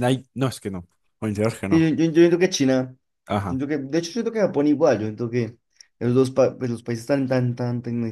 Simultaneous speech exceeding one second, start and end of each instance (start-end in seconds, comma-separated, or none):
none